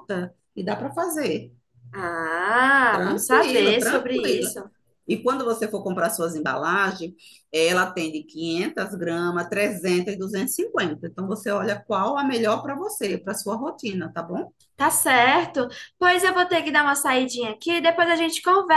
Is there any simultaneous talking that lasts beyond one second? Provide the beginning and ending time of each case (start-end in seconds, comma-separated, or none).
2.9-4.5